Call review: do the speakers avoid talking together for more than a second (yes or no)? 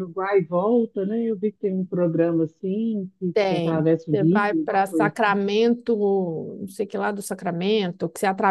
no